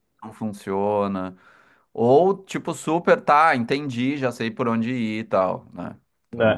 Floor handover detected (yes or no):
yes